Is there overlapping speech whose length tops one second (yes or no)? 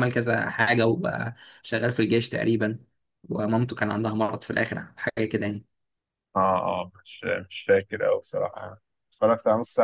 no